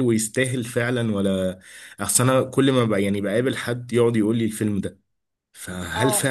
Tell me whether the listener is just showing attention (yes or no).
yes